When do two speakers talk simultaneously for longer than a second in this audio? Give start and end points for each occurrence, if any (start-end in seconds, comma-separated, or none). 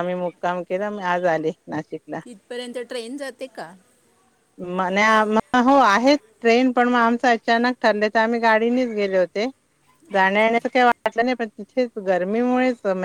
none